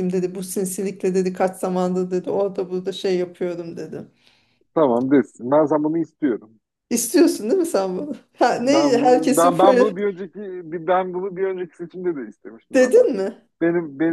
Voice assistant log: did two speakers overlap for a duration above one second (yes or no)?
yes